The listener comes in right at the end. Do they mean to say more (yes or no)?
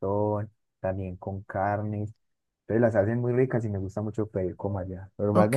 no